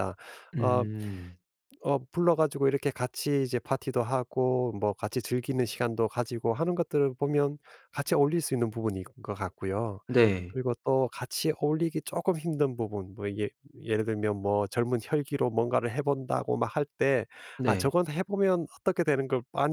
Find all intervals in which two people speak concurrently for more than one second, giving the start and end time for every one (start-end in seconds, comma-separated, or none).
none